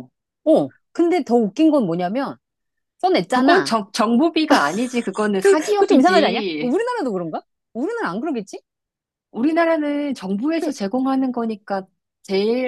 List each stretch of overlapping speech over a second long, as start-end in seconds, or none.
5.4-6.8